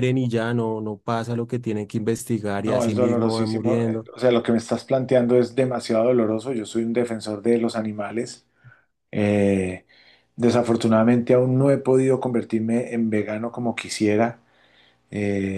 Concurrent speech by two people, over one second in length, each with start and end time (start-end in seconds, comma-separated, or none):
2.6-4.1